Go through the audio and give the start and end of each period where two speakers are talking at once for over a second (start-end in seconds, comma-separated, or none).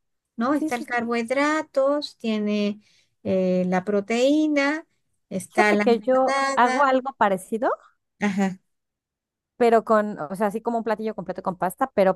5.5-6.9